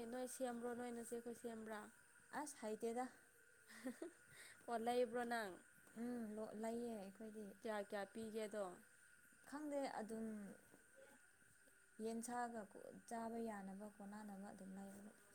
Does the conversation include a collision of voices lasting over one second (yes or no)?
no